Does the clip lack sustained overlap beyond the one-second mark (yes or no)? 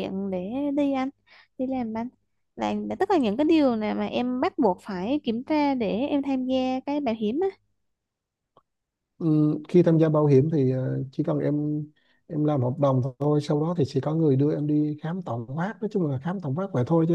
yes